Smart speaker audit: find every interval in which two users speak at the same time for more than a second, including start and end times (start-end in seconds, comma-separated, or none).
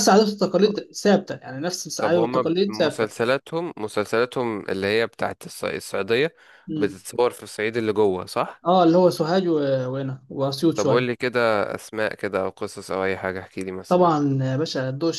2.0-3.2